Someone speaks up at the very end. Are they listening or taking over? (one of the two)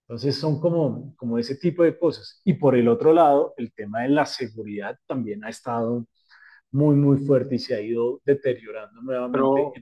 taking over